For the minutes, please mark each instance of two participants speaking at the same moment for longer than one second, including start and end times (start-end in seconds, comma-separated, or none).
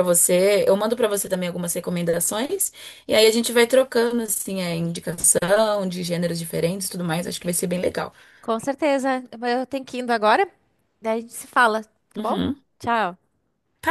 none